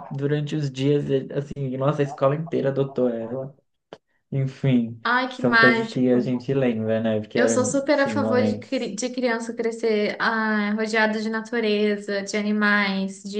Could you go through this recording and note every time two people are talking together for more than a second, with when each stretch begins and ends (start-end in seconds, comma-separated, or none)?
5.0-6.5, 7.3-8.9